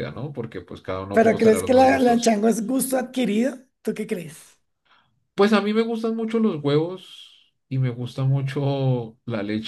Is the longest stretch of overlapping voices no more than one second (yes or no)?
no